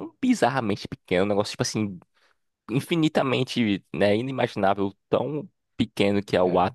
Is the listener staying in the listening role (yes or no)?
yes